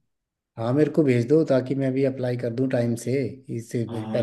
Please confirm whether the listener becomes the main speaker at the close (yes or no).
yes